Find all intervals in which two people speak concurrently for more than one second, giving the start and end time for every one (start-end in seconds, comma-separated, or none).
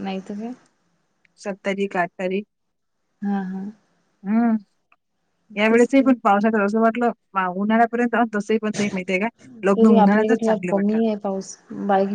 9.8-11.0